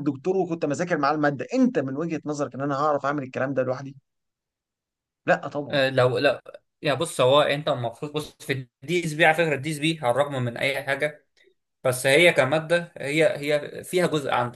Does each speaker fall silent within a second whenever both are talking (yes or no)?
yes